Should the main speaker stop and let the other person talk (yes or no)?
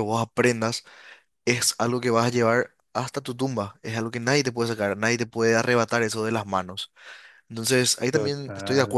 no